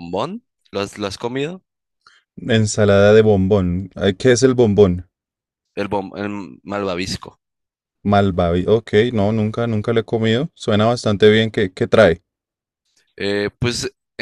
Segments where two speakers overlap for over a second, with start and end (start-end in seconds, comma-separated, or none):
none